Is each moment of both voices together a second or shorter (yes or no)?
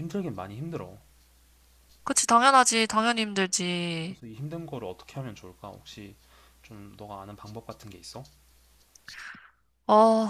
yes